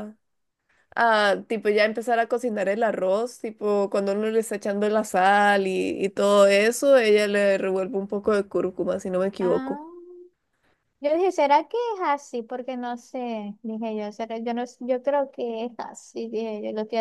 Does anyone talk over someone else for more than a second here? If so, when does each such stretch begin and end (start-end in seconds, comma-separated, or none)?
none